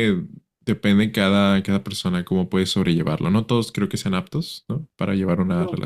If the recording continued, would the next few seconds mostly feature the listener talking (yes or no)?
yes